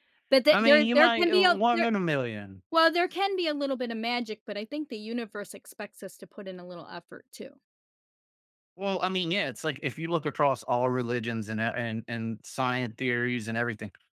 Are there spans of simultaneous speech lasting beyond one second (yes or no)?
yes